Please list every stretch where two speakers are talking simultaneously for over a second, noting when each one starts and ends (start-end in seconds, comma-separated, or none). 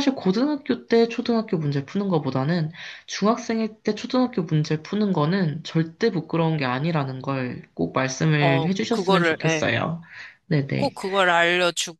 8.4-9.7